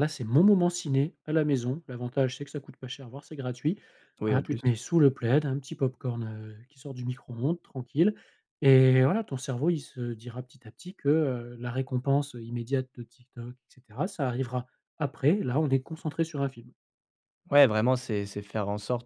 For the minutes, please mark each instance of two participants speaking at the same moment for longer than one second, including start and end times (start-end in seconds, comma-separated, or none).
none